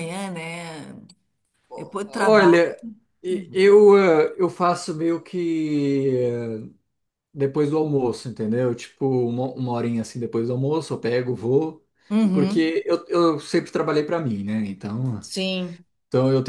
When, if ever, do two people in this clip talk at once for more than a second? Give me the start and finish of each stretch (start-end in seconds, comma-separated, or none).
none